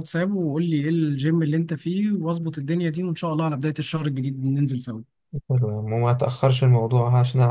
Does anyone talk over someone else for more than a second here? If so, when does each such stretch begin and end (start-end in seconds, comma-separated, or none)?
none